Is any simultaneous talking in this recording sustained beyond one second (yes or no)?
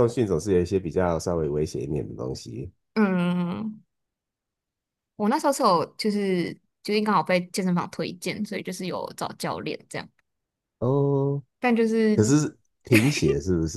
no